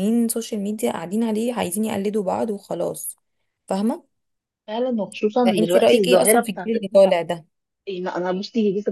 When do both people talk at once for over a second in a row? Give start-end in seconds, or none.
5.5-6.7